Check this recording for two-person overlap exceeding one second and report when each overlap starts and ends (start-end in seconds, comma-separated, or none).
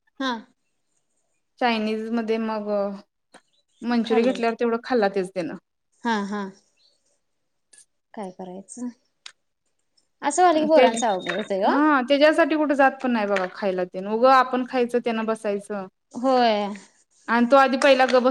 none